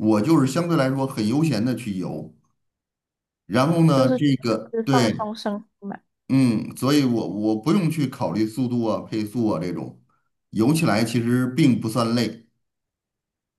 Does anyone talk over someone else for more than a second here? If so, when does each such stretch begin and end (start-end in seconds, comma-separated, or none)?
3.9-5.3